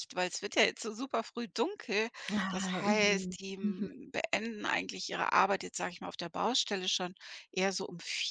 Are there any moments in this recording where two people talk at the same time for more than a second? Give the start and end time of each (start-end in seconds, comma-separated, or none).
2.5-3.9